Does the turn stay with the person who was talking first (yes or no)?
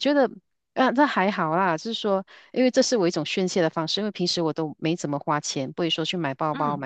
yes